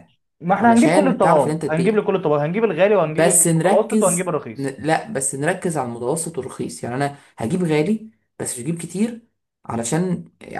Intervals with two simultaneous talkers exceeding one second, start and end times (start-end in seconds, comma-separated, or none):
0.6-2.0, 3.0-4.8